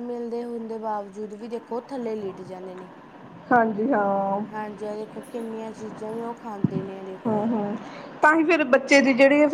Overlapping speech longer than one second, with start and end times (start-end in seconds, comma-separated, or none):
none